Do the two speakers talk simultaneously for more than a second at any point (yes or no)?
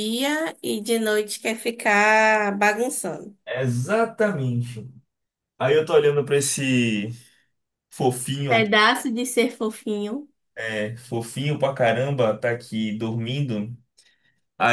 no